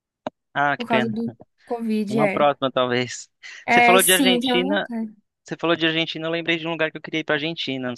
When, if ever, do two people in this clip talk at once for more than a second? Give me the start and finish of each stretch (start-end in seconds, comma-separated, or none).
3.7-4.9